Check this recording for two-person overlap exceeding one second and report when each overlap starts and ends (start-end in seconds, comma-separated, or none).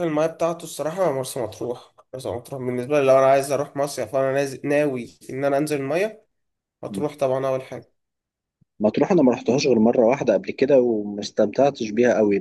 none